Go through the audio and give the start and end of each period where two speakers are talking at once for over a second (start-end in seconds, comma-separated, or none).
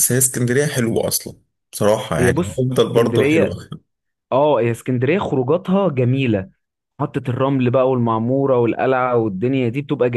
2.2-3.6